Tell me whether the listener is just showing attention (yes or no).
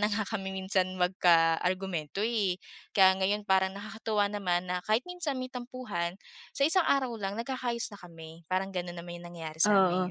no